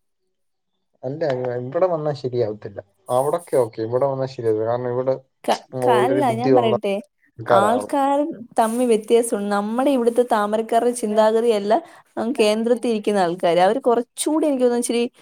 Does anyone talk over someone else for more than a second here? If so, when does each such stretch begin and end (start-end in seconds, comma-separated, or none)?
none